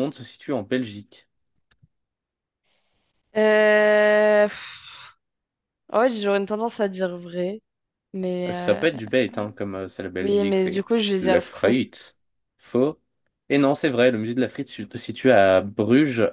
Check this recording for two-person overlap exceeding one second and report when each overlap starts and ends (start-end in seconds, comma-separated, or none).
10.2-11.8